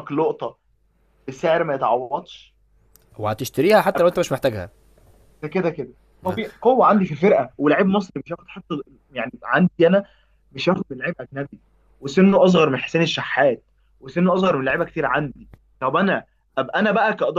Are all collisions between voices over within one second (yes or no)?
yes